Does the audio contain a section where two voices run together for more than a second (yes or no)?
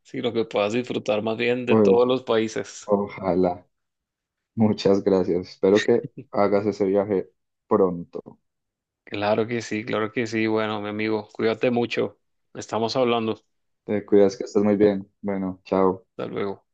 no